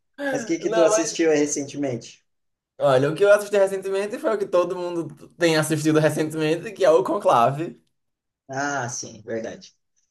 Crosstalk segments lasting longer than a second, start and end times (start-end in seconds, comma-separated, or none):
none